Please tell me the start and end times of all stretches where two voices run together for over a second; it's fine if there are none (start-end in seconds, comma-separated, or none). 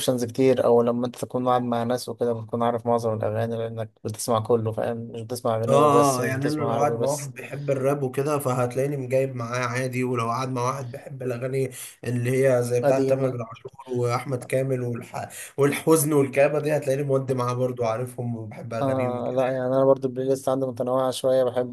5.7-7.3